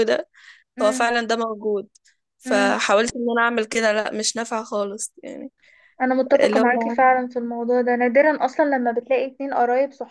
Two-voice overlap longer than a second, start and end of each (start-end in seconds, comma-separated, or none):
none